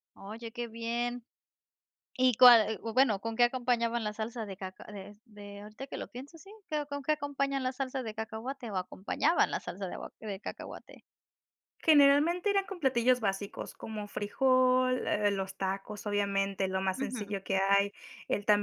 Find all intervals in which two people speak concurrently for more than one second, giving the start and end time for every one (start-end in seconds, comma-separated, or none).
none